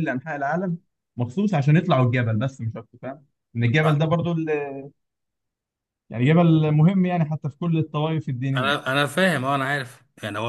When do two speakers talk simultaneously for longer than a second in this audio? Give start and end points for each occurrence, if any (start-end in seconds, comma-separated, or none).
none